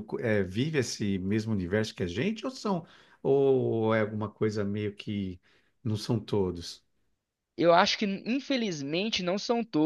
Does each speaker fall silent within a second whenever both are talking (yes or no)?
yes